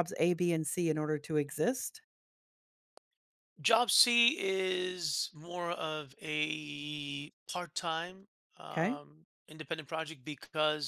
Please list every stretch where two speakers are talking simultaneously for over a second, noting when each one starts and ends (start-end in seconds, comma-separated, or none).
none